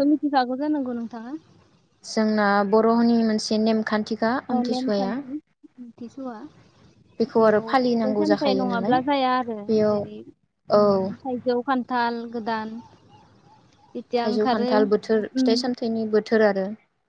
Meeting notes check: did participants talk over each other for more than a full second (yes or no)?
yes